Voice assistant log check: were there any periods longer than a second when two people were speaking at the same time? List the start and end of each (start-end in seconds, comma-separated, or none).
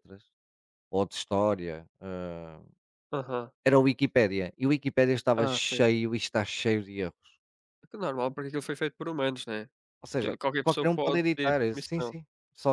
10.1-12.2